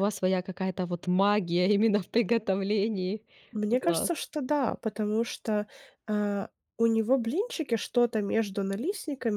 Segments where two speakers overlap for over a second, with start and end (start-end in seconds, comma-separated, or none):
none